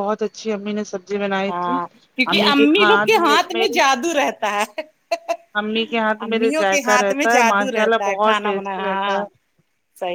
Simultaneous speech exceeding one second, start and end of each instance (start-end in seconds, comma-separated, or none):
6.3-9.2